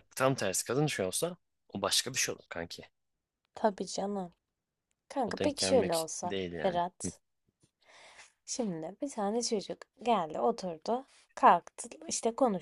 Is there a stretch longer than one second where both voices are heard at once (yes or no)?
yes